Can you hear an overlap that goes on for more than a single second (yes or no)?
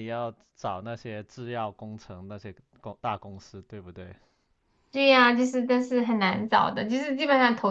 no